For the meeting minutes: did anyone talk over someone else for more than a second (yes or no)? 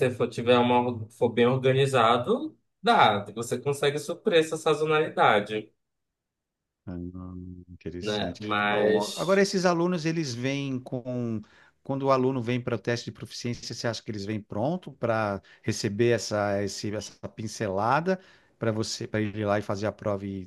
yes